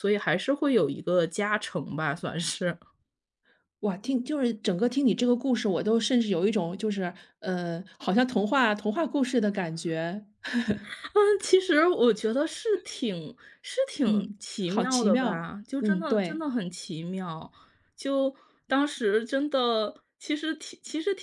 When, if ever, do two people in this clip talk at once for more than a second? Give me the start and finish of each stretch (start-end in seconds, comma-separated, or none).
14.0-16.4